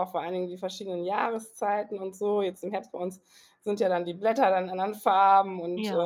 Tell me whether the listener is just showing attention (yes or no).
yes